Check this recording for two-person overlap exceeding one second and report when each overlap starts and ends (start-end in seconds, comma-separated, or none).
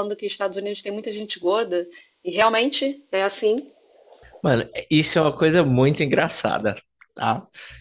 none